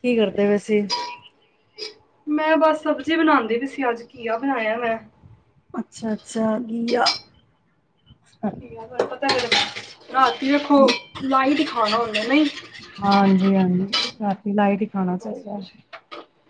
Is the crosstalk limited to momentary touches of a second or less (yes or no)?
yes